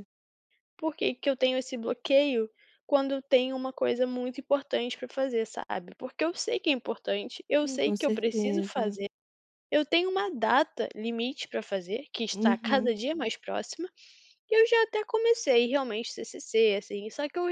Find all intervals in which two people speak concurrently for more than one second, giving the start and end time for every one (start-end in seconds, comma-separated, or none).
7.6-9.0